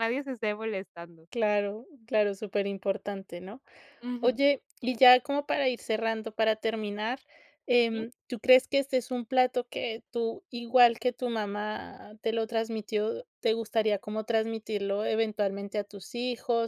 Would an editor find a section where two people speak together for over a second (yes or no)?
no